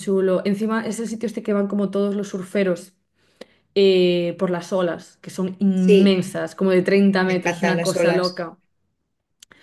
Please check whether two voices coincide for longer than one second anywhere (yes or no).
yes